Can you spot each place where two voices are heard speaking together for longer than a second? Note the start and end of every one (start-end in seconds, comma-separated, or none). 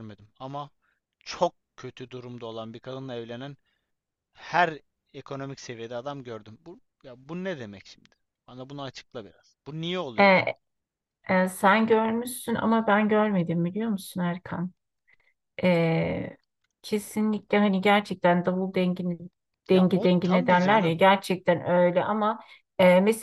19.7-21.0